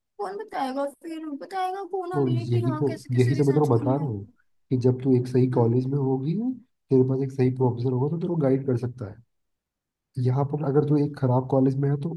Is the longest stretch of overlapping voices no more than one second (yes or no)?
no